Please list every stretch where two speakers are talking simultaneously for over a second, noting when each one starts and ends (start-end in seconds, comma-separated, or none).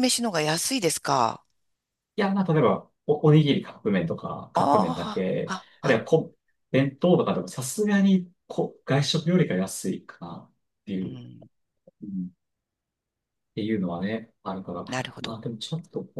4.5-6.0